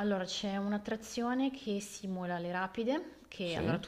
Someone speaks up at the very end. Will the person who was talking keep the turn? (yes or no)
yes